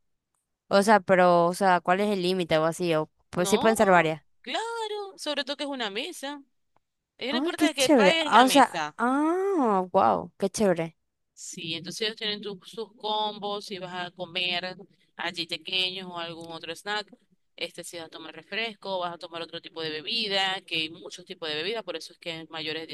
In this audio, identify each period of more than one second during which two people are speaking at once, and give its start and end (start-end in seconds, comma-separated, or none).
7.3-9.0